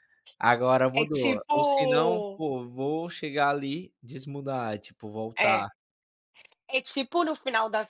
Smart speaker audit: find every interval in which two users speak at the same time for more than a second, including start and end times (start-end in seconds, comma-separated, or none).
1.0-2.4